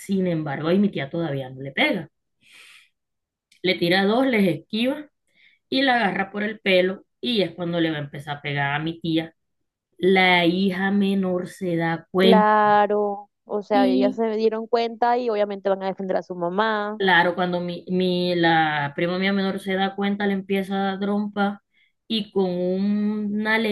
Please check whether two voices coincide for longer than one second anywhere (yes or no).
no